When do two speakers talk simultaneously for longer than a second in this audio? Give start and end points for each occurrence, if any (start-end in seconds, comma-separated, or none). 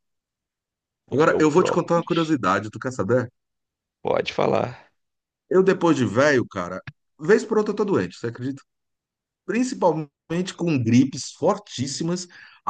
1.1-2.4